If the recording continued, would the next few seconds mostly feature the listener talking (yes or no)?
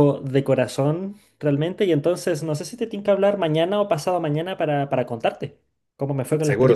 yes